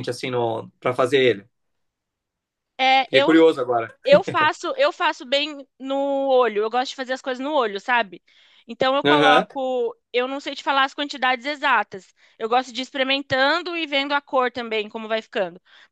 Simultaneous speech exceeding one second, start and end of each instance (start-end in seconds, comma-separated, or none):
none